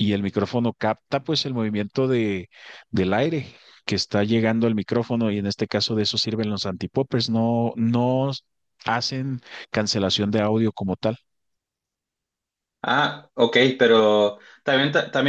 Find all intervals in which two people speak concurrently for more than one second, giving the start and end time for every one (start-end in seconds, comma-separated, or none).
none